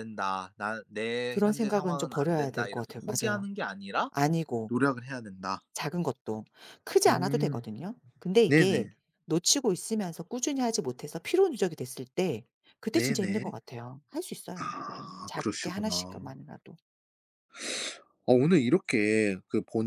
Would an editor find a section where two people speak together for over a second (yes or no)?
yes